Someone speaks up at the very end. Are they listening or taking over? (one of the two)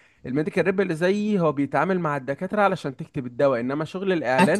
listening